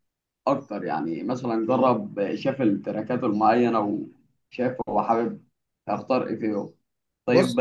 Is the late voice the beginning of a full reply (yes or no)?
no